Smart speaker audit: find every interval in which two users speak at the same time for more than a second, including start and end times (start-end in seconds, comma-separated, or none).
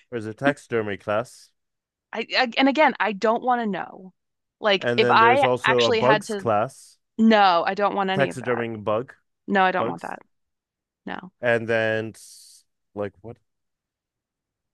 4.8-6.4